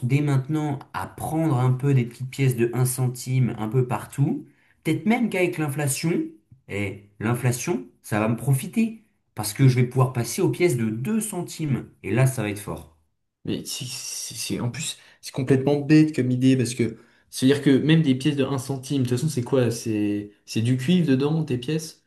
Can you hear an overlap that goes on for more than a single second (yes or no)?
no